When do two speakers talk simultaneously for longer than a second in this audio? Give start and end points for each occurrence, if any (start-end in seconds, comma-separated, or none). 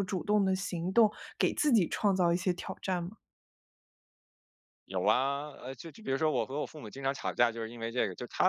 none